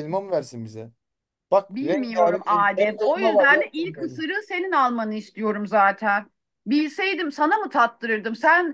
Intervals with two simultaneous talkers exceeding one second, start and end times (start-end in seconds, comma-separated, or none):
1.7-4.2